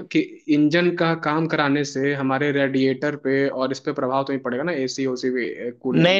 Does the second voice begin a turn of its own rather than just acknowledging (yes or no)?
yes